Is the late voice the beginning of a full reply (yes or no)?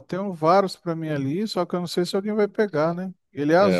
yes